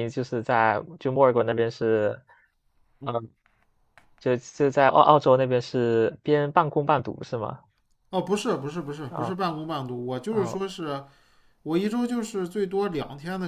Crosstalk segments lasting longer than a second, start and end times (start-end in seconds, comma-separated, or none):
none